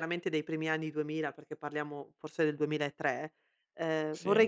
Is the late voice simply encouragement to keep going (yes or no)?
yes